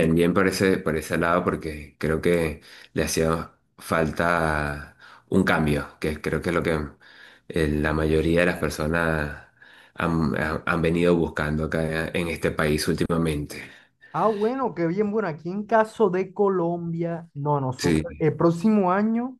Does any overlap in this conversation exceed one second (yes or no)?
no